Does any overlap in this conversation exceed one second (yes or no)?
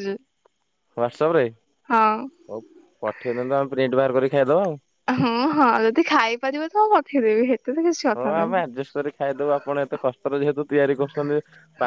no